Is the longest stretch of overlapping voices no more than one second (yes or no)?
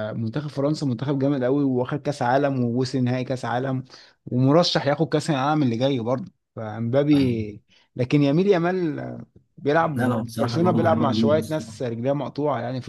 no